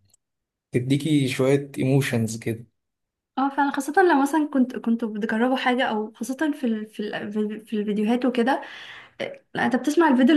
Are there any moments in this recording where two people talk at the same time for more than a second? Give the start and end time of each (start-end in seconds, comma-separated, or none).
none